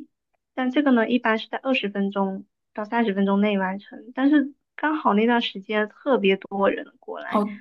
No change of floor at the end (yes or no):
no